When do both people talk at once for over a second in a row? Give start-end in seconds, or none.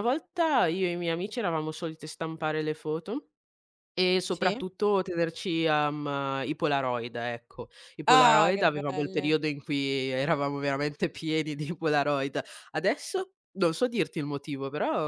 8.0-9.4